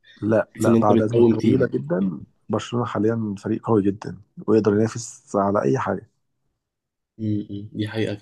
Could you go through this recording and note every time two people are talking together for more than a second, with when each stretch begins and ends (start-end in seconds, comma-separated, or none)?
0.5-1.7